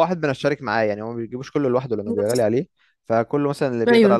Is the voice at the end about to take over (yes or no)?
no